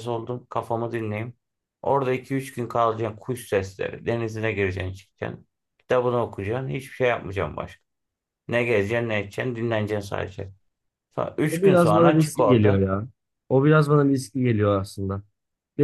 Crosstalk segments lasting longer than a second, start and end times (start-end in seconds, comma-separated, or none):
11.5-12.9